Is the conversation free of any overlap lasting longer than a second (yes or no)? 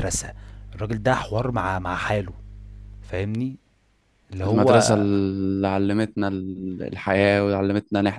yes